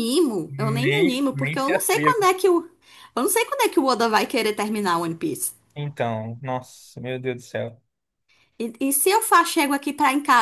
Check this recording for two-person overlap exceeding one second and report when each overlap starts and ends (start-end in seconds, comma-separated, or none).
0.6-2.1